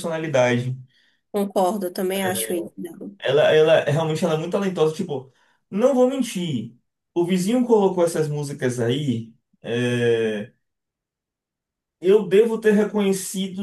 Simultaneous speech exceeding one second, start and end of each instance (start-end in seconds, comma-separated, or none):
none